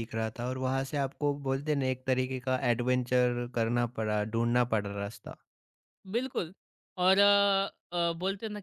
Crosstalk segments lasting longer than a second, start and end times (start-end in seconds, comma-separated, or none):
none